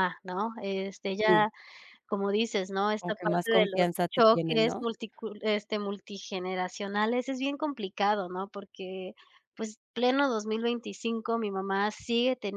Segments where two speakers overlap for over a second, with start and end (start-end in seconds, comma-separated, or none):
3.0-4.8